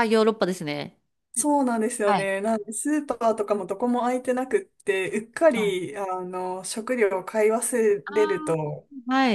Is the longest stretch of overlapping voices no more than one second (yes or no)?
yes